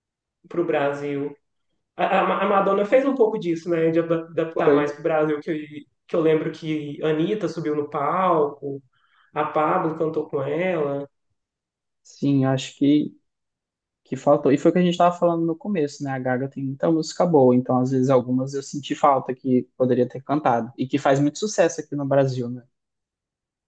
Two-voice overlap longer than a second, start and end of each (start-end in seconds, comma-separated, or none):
none